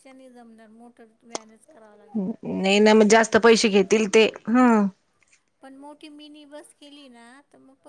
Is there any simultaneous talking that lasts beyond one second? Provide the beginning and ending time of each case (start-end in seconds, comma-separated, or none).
none